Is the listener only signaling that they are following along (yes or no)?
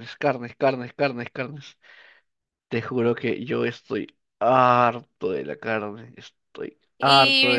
no